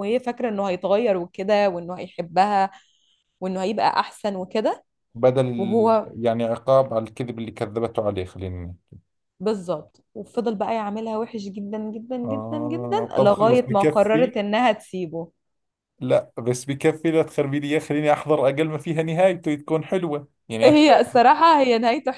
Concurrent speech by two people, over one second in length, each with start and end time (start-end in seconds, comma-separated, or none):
12.2-14.3